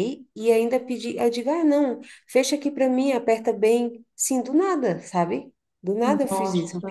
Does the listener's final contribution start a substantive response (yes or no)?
no